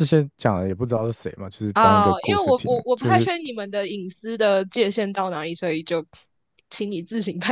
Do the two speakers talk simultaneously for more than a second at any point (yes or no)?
yes